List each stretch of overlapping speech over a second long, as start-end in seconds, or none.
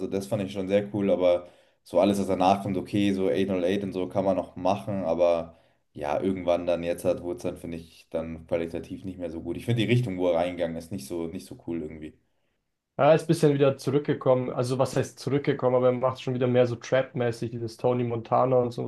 none